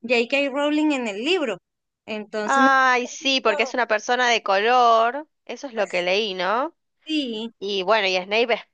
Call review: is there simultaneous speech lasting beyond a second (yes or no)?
yes